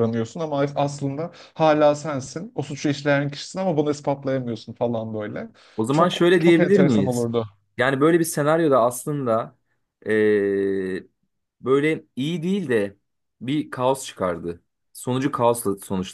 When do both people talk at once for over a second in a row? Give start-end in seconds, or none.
5.9-7.3